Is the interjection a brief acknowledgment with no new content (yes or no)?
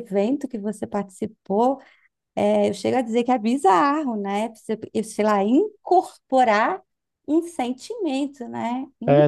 no